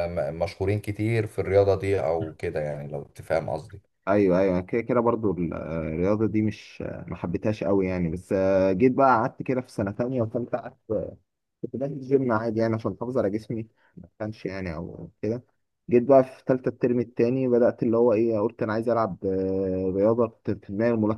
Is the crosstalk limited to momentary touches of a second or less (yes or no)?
yes